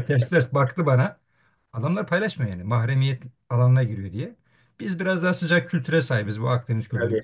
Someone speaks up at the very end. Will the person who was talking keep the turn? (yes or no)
yes